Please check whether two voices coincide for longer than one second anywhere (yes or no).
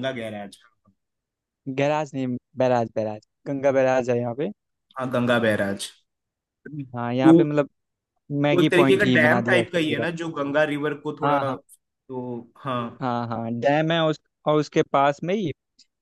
yes